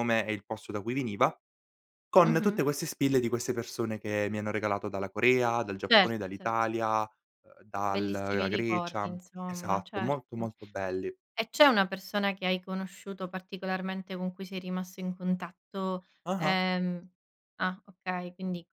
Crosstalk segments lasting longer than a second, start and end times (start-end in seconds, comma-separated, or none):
7.9-10.5